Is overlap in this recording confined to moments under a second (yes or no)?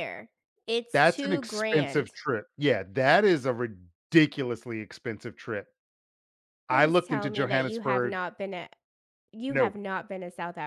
no